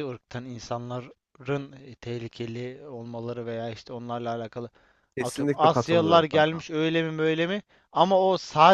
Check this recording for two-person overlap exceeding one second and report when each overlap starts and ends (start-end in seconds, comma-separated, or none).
5.2-6.7